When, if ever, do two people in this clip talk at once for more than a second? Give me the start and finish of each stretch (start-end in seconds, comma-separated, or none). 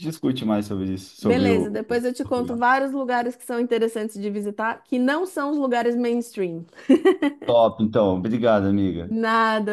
1.2-2.6